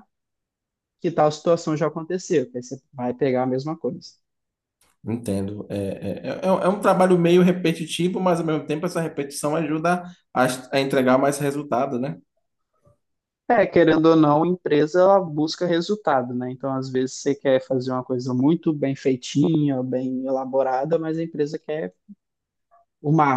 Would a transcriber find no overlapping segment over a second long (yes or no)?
yes